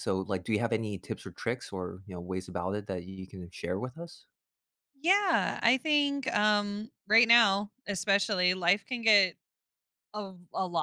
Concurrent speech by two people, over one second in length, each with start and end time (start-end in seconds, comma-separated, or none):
none